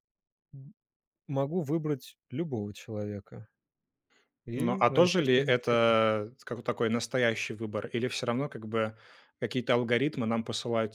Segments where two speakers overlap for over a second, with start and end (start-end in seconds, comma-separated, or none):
4.5-5.8